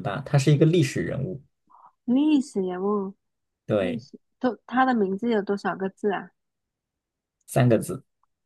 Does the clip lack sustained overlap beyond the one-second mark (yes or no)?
yes